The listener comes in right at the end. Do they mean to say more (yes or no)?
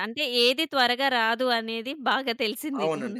yes